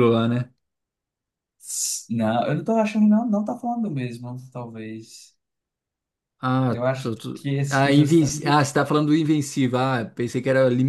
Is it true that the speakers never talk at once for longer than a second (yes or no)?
no